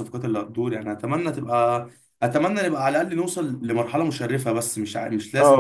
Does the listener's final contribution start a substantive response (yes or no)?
yes